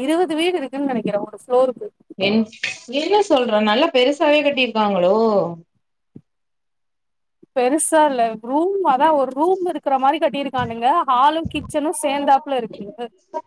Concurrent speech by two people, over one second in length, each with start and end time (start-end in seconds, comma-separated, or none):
none